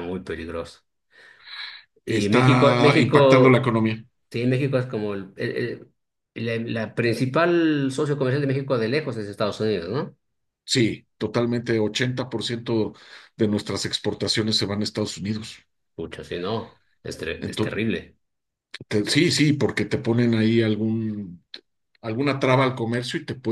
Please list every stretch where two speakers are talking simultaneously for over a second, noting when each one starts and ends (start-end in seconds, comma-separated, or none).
2.1-3.7